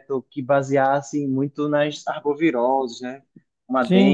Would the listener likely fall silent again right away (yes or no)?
no